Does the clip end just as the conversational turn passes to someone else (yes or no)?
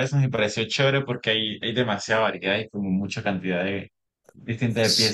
no